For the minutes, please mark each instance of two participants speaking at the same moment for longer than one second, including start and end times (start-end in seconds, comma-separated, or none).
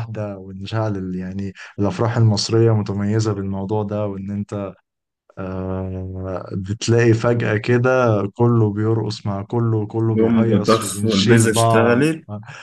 10.2-12.1